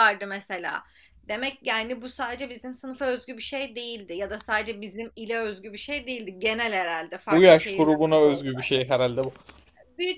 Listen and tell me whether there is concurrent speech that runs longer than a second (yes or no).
yes